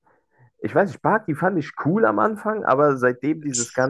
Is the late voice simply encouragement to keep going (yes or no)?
yes